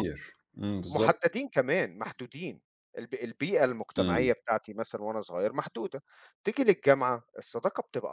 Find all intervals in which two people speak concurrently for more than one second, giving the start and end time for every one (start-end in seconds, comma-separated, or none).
none